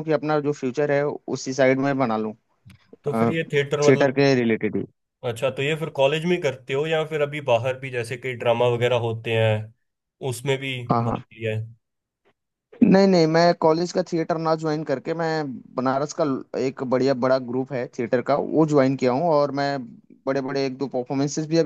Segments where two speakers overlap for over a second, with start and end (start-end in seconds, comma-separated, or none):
none